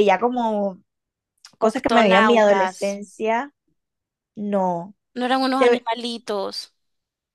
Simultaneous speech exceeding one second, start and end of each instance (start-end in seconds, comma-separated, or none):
1.7-3.0